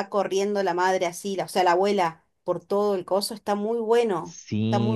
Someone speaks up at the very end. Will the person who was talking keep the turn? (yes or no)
no